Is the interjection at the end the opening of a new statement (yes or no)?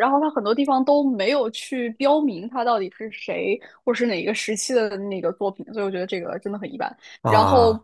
no